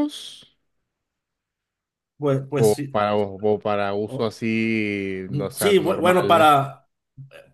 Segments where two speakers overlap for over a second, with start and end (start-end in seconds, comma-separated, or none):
5.3-6.5